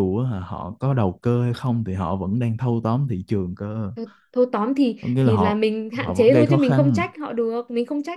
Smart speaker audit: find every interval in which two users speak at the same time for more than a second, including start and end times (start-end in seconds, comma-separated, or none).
5.0-7.0